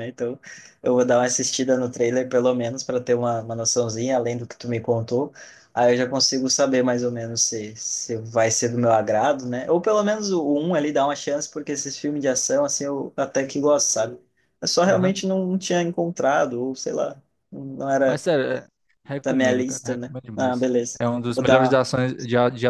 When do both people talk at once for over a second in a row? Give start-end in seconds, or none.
19.2-21.8